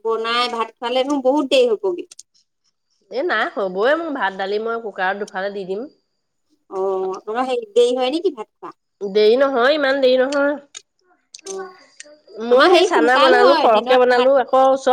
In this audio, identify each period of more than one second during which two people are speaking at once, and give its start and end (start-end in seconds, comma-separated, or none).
12.5-14.3